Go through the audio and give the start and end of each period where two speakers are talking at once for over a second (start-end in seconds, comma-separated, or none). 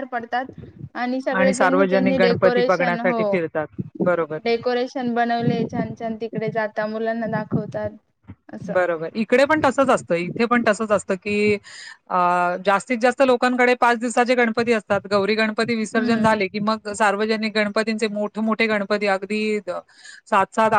1.5-3.2